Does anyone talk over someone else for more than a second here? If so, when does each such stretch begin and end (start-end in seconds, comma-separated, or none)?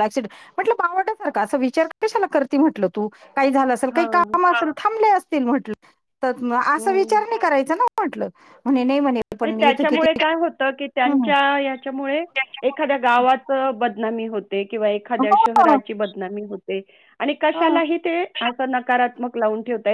none